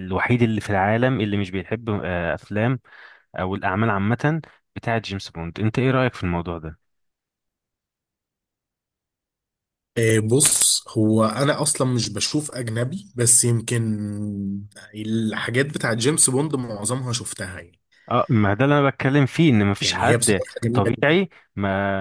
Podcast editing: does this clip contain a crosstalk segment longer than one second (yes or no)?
yes